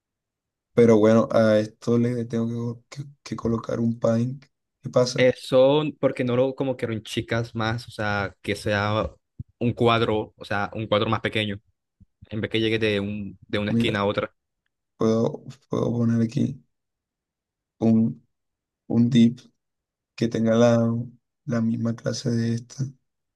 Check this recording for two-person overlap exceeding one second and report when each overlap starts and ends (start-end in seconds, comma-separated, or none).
none